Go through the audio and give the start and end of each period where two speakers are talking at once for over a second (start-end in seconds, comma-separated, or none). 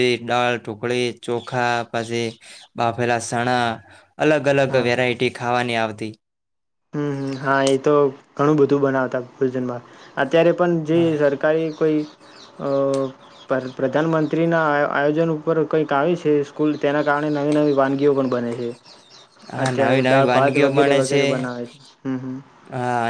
19.6-21.2